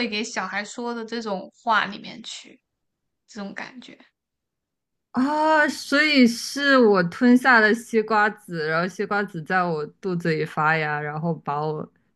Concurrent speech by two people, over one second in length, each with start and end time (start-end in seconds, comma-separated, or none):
none